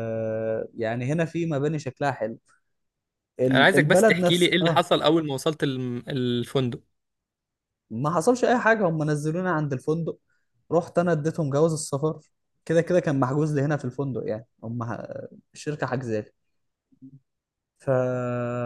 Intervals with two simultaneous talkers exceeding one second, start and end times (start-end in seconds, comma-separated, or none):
3.5-4.9